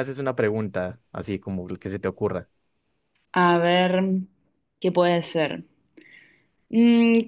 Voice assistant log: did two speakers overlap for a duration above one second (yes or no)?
no